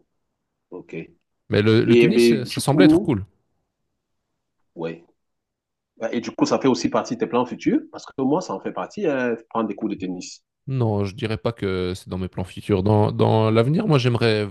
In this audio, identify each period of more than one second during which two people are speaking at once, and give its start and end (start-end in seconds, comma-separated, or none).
1.6-3.2